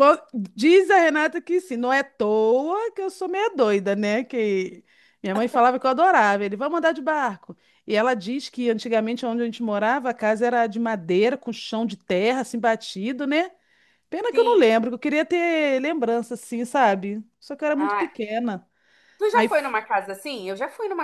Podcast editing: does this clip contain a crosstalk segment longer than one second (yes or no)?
no